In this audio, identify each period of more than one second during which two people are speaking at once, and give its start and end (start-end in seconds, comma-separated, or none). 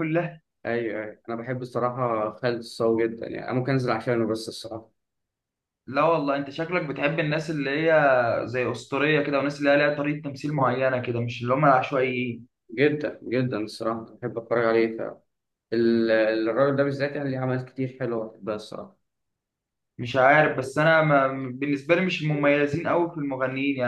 none